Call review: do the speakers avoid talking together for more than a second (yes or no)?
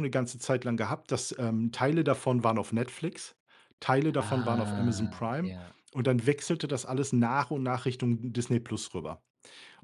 no